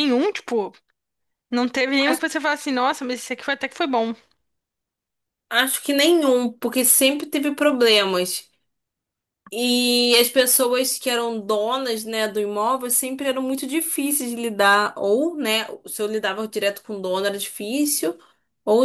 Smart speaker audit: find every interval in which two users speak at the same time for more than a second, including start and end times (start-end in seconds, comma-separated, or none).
none